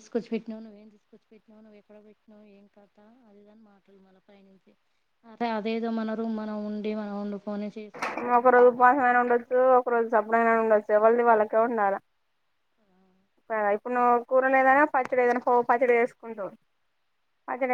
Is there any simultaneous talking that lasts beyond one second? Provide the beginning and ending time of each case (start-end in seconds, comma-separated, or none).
none